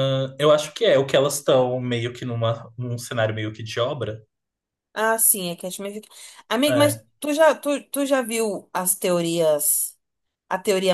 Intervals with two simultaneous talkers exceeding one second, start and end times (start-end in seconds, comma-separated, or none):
none